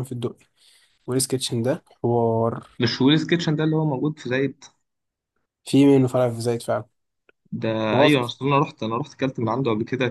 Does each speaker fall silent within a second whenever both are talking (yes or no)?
yes